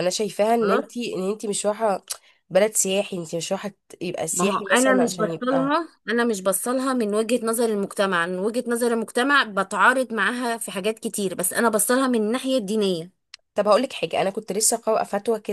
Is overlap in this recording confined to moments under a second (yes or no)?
no